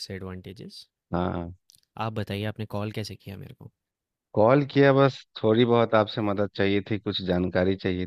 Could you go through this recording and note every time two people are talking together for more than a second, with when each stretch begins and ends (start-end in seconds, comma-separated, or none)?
none